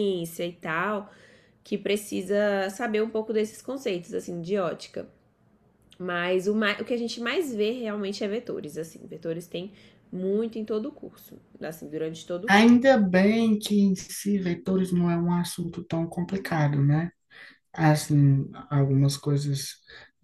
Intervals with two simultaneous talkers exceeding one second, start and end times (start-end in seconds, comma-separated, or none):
none